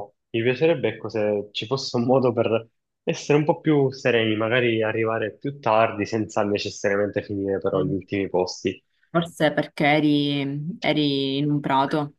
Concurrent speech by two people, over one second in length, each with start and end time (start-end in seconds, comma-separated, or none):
none